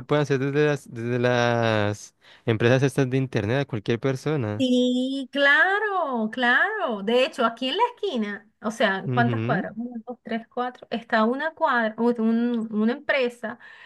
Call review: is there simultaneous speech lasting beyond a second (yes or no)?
no